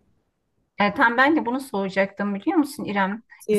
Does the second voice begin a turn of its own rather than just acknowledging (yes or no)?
no